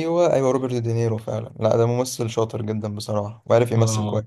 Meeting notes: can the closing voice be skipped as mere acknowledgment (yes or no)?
no